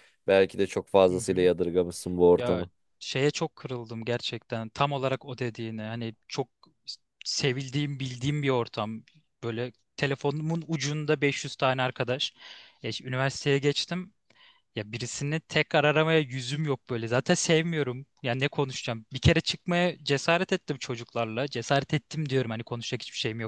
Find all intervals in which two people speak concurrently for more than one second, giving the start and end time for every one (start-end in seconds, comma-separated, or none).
none